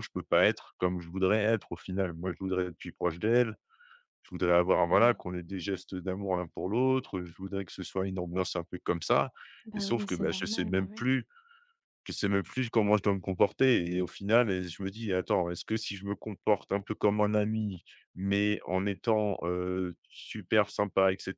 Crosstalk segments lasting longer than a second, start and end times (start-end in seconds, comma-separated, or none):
9.7-11.1